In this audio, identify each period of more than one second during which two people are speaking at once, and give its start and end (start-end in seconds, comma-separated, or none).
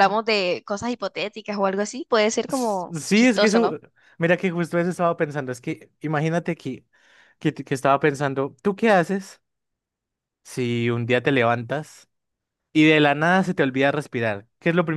2.5-3.8